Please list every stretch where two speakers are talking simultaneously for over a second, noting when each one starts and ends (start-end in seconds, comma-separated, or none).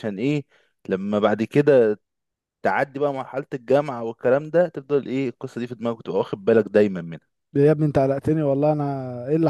none